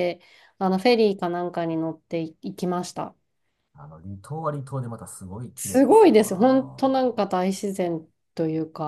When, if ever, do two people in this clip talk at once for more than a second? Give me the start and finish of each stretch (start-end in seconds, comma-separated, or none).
5.5-7.0